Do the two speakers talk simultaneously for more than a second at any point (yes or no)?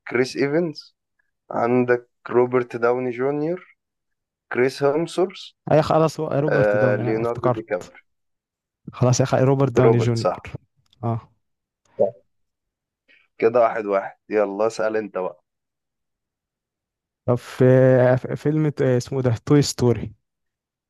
yes